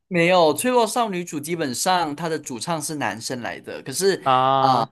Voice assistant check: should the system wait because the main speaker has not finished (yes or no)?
yes